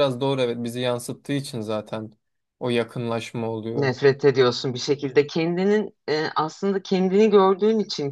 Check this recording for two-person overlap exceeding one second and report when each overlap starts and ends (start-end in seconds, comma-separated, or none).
none